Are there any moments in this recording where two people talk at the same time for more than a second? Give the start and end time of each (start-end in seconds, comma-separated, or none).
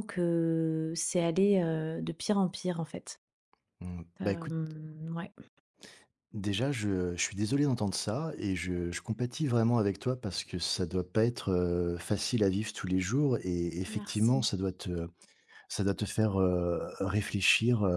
none